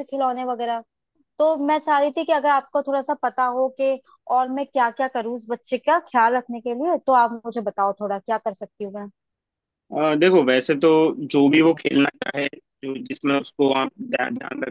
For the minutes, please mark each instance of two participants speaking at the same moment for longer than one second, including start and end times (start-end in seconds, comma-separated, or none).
none